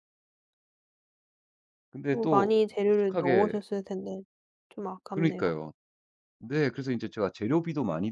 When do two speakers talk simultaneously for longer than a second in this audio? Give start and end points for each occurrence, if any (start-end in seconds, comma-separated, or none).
2.1-3.6